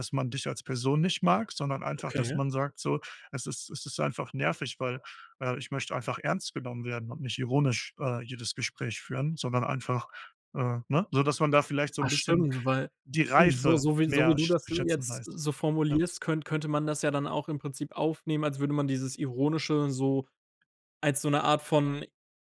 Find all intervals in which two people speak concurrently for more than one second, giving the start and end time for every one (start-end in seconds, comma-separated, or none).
13.3-15.3